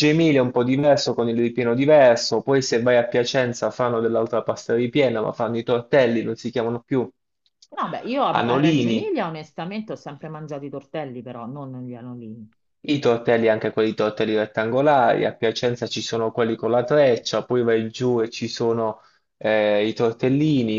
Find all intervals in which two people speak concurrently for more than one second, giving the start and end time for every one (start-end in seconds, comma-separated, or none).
none